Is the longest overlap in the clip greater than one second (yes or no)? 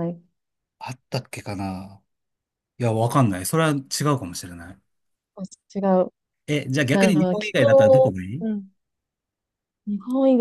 yes